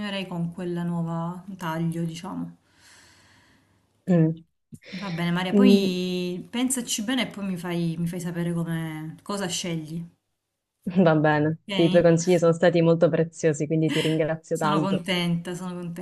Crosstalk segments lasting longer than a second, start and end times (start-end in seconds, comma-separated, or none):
none